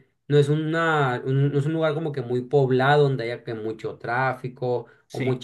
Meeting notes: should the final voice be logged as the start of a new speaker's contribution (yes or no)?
no